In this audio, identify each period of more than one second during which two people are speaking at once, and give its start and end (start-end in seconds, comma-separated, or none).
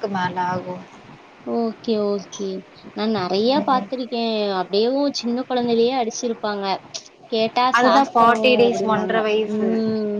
none